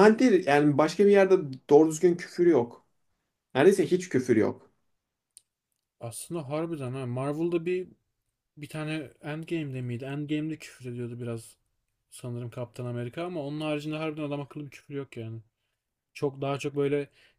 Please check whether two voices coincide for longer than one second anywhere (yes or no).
no